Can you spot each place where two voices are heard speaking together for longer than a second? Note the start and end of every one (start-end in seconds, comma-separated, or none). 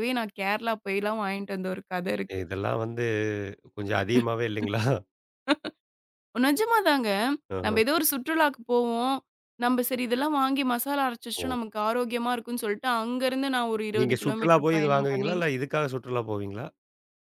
14.0-15.3